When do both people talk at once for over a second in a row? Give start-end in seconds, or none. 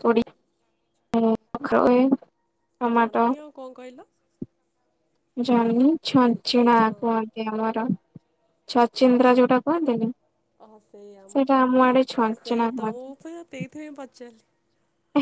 11.3-13.1